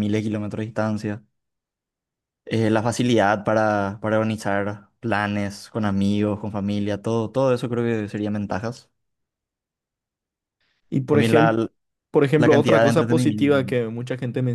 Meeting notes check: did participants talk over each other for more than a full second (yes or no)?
yes